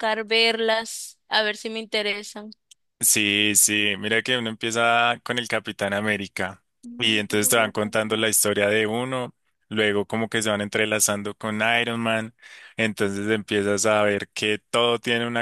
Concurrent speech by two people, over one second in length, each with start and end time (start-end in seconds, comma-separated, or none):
6.8-8.2